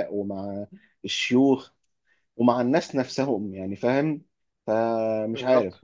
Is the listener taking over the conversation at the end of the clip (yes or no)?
no